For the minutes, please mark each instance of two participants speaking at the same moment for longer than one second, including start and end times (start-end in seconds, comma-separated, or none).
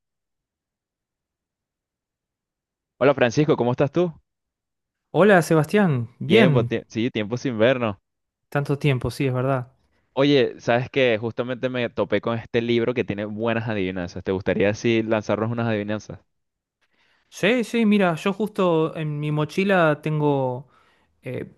none